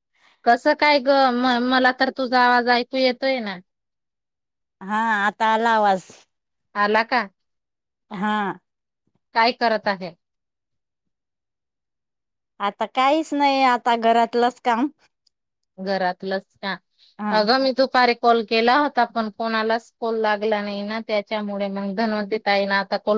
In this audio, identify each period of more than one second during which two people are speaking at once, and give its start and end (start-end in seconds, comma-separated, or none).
none